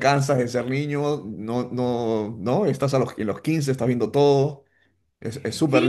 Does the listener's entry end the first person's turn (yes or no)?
yes